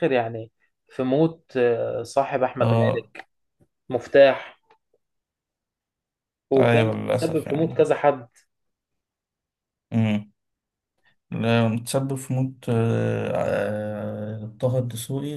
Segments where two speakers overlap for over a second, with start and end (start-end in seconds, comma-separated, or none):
6.6-7.9